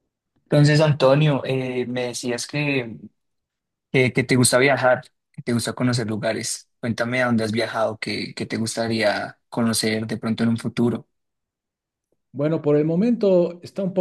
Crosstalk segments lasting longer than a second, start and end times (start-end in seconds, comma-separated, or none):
none